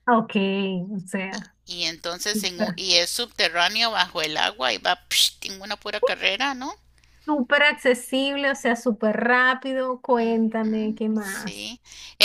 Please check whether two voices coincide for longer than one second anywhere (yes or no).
yes